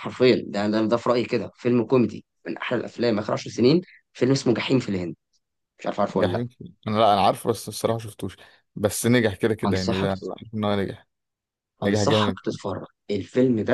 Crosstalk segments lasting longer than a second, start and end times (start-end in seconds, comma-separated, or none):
none